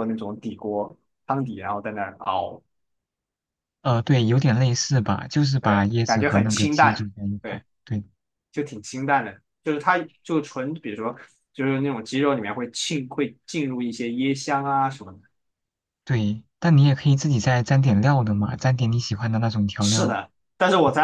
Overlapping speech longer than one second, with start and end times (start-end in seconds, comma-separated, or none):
5.6-7.6